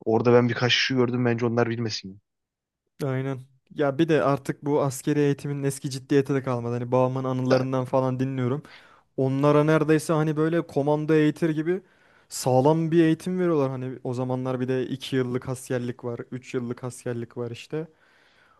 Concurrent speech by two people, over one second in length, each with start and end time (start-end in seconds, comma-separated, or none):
none